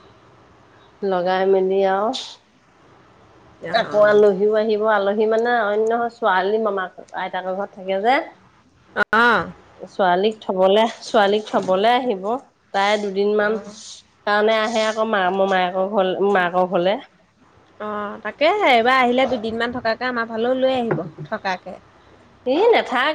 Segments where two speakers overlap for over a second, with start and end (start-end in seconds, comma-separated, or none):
none